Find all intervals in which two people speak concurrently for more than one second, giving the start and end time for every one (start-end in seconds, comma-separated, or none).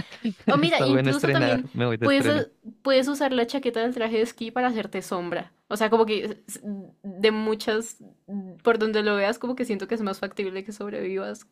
0.6-2.5